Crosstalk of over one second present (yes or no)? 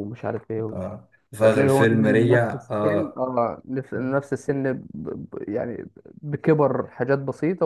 yes